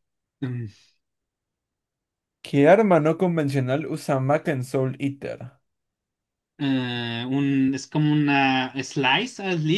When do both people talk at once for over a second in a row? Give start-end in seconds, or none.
none